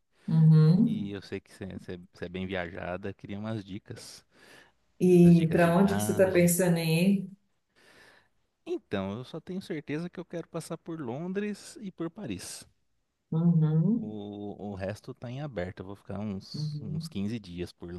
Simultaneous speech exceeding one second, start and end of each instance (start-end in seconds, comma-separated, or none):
5.2-6.5